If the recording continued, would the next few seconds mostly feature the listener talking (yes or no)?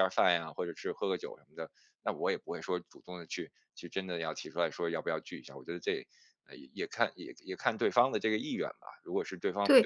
yes